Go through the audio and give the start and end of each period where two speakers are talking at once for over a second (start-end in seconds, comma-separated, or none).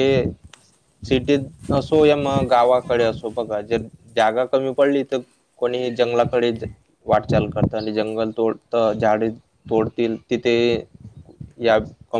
2.1-3.9